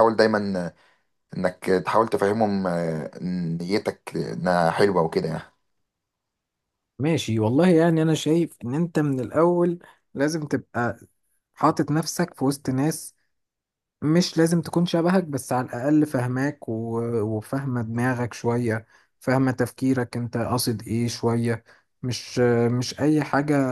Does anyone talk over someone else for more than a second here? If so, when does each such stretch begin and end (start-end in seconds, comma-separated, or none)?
none